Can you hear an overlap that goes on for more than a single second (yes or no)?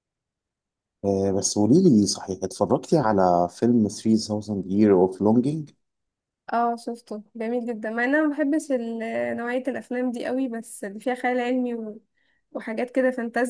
no